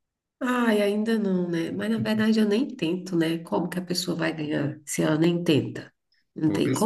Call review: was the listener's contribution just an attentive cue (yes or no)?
no